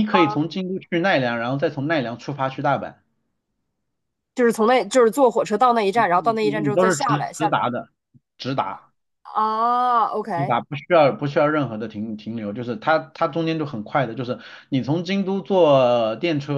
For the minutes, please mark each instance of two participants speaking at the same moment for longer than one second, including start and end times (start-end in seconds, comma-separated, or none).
6.0-7.5